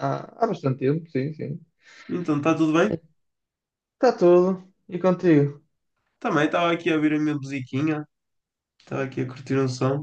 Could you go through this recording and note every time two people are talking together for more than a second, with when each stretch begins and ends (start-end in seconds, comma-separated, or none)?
none